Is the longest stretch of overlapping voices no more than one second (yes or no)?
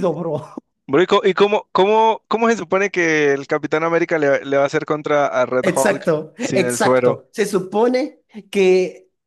no